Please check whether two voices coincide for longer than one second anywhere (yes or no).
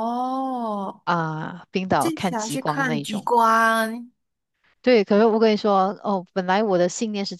yes